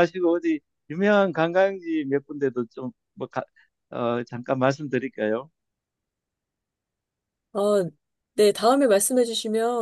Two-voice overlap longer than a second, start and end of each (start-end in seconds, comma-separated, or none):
none